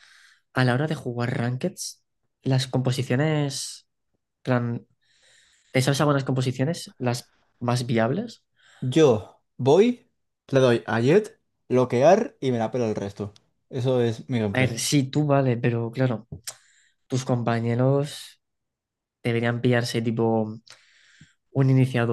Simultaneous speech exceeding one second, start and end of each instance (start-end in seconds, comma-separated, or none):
none